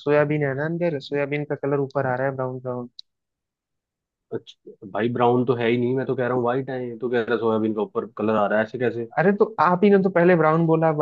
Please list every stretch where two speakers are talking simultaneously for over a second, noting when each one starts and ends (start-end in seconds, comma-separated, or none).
none